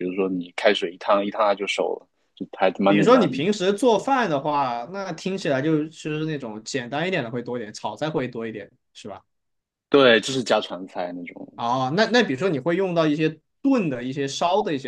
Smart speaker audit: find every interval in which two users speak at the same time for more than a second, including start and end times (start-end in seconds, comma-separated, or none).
none